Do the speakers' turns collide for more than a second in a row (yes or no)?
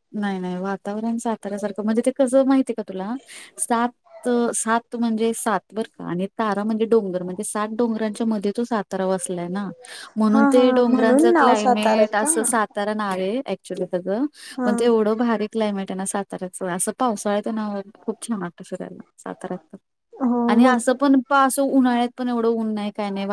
yes